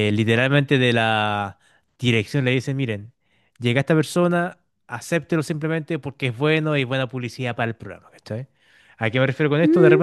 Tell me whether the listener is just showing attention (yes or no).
yes